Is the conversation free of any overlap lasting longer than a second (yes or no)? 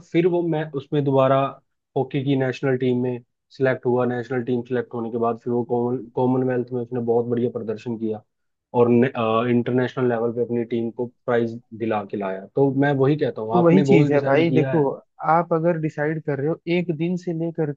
no